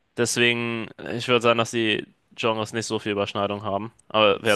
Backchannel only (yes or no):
no